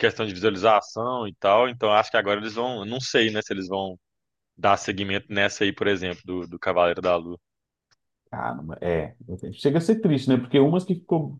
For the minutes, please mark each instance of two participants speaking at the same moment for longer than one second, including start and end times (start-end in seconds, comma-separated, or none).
none